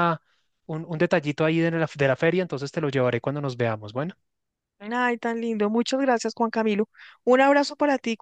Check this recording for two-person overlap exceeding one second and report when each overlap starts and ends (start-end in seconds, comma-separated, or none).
none